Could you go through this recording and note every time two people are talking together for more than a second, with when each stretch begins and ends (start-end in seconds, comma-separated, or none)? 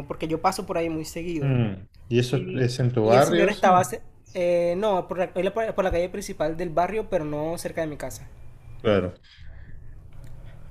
2.3-3.9